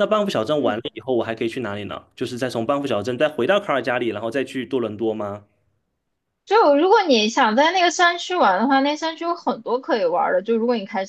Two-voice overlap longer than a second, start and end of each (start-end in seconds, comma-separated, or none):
none